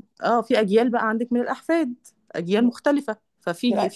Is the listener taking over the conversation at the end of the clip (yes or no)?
no